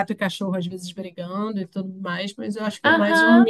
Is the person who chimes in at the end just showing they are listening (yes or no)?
no